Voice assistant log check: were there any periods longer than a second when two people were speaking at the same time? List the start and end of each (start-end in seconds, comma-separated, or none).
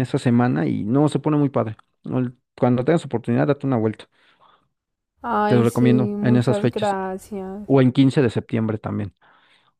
5.5-7.0